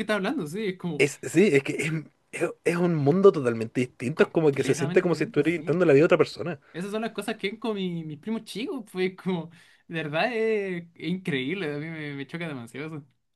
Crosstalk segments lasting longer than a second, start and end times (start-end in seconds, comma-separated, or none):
4.1-5.8